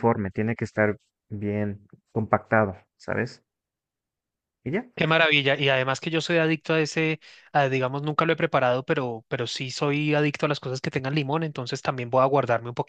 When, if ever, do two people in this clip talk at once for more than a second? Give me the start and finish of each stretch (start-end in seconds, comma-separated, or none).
none